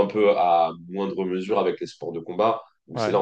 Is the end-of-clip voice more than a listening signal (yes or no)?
no